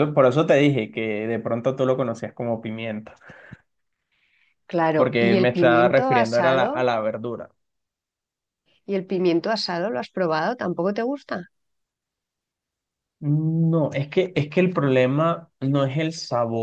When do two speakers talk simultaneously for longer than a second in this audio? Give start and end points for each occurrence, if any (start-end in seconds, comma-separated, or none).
4.9-6.8